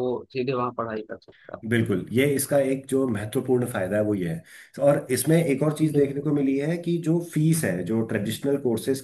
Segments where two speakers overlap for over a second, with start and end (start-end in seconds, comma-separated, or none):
none